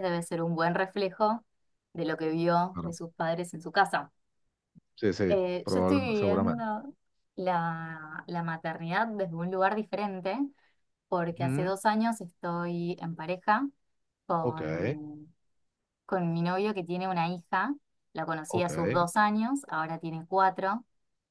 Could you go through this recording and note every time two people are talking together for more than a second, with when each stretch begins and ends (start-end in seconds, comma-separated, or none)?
5.3-6.7